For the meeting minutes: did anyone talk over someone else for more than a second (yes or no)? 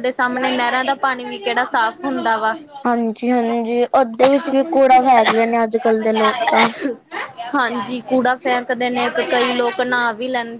no